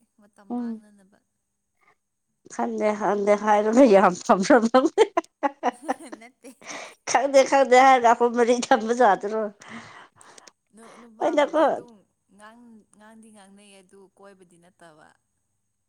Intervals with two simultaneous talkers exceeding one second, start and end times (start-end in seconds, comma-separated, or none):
none